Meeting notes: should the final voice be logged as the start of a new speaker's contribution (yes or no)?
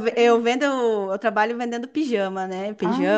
no